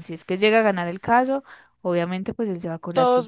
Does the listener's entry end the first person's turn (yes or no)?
yes